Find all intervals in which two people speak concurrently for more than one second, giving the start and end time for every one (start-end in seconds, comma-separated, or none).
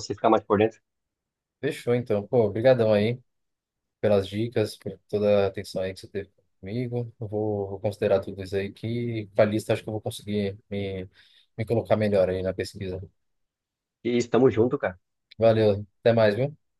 none